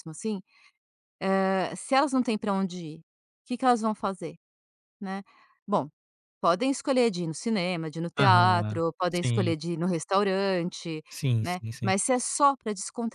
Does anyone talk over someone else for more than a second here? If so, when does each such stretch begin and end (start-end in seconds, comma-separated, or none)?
8.2-9.5